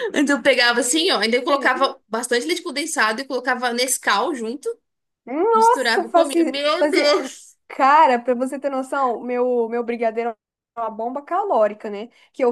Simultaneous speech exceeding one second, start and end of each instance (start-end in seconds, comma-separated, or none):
5.5-7.2